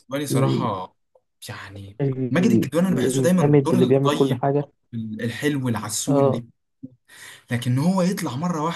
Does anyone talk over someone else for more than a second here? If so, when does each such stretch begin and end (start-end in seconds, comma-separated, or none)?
2.0-4.5